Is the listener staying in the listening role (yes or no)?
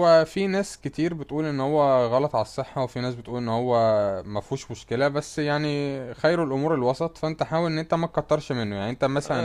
no